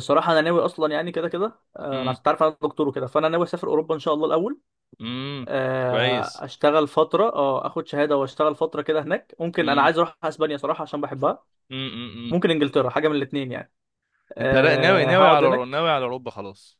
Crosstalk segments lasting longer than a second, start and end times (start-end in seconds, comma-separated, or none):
14.4-15.8